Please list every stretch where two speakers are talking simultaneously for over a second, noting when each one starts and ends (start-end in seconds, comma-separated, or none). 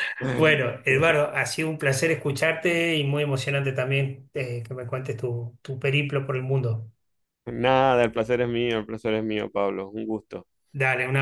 none